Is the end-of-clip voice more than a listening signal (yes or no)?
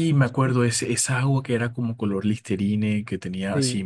yes